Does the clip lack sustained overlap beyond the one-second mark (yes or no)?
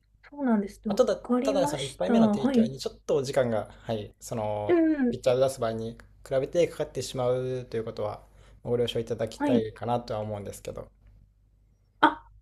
no